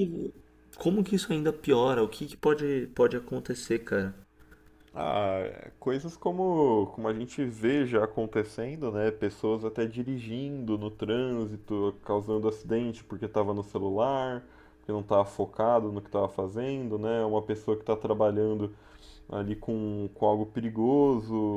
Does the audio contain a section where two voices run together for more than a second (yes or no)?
no